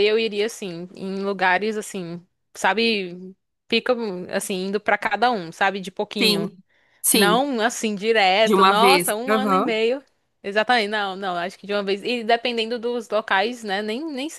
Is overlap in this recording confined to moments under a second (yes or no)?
no